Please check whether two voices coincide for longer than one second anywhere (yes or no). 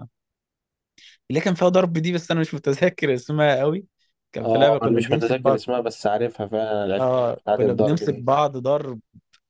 yes